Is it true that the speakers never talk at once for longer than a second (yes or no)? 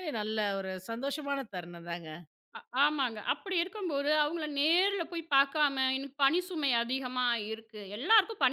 yes